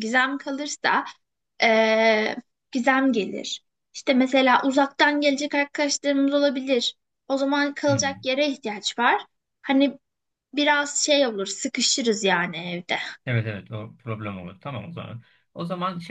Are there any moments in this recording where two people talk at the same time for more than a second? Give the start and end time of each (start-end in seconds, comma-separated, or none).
none